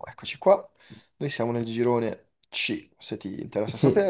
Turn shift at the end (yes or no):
yes